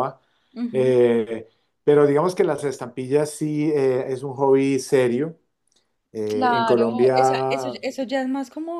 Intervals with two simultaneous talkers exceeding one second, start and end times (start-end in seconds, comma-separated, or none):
6.3-7.8